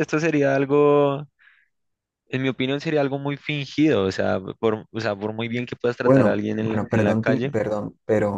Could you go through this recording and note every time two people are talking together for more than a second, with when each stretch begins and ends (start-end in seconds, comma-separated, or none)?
6.0-7.5